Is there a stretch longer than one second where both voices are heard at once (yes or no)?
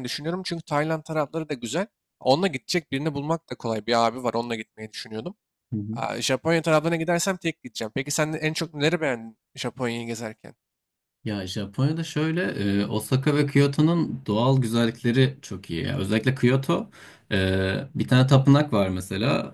no